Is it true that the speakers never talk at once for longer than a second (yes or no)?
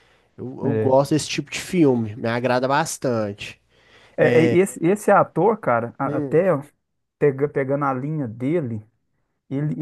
yes